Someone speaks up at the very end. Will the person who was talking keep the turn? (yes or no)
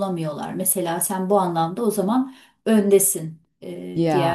yes